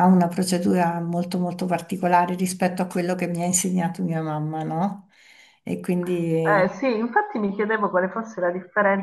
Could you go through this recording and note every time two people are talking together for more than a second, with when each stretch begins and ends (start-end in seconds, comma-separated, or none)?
none